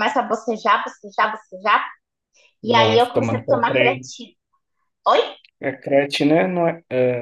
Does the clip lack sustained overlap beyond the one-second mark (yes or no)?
no